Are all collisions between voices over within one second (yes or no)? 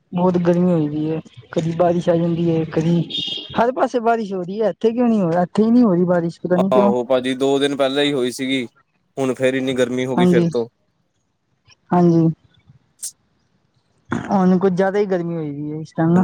yes